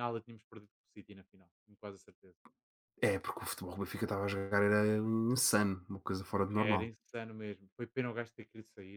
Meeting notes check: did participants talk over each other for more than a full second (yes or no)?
no